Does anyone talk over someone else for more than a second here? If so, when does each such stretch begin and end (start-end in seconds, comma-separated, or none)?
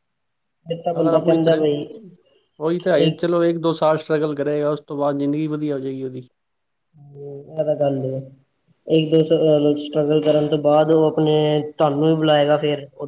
none